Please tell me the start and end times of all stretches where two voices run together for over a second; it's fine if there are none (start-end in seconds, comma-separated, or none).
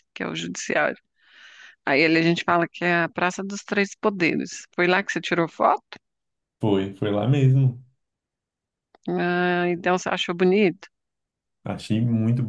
none